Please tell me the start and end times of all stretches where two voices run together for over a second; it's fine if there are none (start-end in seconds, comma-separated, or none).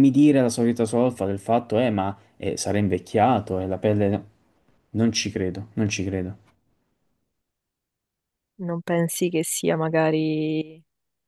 none